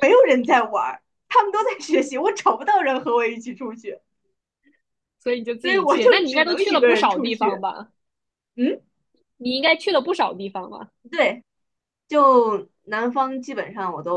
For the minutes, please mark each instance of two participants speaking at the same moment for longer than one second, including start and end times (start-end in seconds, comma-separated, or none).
5.6-7.6